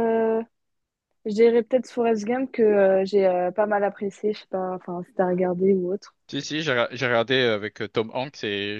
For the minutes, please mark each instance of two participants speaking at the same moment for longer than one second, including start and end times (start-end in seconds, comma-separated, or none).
none